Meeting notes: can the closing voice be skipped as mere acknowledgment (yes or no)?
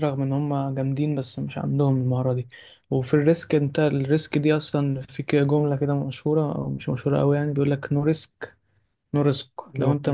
yes